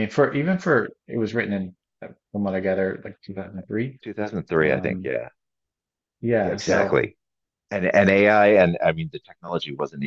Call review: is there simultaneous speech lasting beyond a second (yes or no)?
no